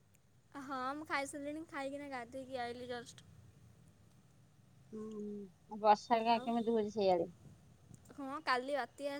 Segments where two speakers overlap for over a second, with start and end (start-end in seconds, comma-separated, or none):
none